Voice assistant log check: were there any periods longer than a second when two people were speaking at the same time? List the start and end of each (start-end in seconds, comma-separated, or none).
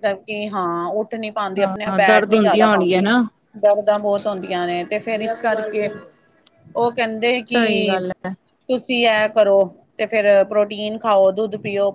1.6-3.0